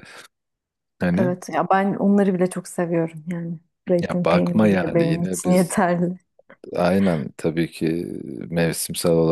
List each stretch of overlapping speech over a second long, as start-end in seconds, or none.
4.0-5.8